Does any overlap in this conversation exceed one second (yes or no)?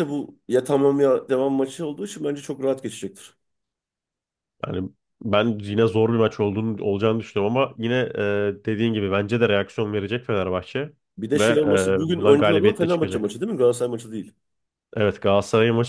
yes